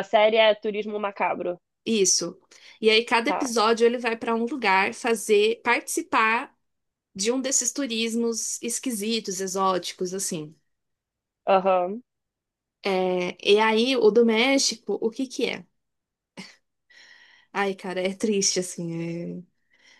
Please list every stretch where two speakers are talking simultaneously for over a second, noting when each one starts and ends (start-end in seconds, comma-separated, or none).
none